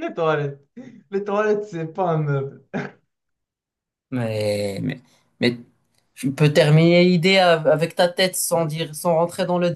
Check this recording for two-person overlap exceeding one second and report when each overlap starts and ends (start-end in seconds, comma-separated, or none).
none